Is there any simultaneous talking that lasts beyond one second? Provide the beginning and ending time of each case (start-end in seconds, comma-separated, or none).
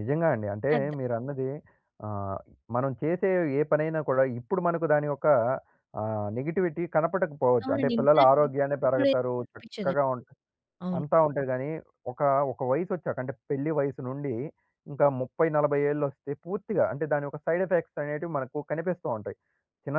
7.6-10.0